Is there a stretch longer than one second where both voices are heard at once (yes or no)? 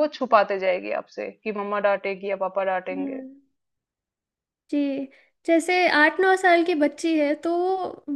no